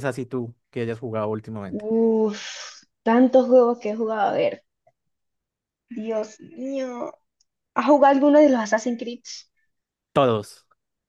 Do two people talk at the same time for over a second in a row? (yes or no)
no